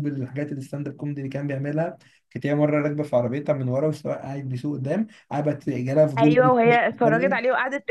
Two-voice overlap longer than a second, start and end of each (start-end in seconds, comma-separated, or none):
6.2-7.4